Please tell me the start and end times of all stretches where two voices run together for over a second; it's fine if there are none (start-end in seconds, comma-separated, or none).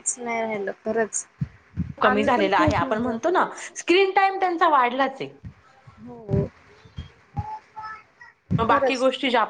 2.1-3.7